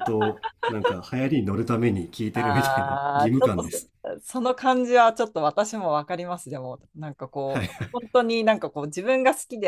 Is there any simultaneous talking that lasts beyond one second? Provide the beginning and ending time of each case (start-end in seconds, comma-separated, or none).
2.3-3.9